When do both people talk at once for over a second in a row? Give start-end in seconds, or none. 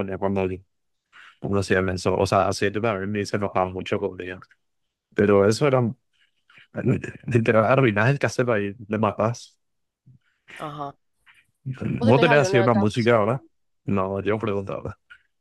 12.0-13.4